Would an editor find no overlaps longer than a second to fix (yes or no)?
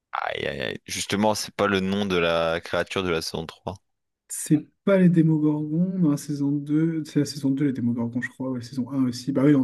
yes